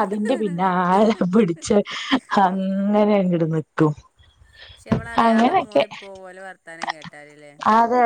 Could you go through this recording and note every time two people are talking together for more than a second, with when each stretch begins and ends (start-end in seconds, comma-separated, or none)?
none